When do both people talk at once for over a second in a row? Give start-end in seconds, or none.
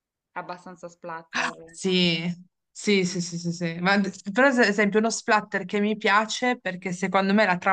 none